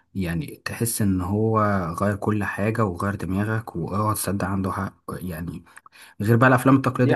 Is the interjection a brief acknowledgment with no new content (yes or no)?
yes